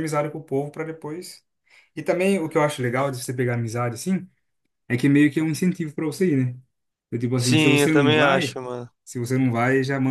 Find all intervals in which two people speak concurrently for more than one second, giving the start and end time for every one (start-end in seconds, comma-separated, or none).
7.4-8.6